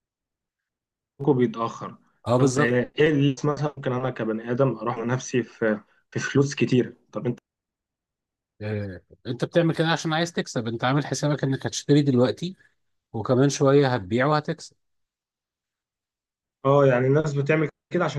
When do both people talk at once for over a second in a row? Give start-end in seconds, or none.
none